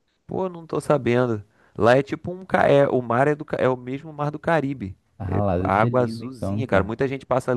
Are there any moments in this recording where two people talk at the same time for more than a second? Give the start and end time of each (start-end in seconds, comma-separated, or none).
5.2-6.9